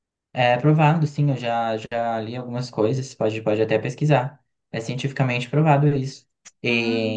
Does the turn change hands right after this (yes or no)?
no